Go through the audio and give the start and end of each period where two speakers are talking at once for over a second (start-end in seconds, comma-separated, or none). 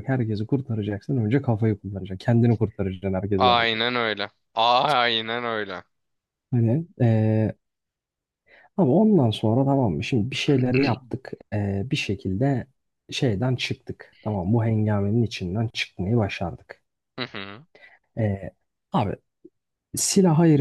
none